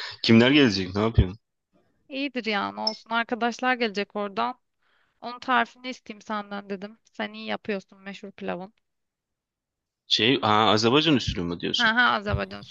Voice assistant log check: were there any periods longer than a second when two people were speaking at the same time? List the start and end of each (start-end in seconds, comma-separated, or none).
none